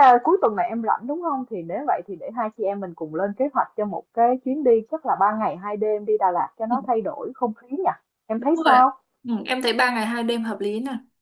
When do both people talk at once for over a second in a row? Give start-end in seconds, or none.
none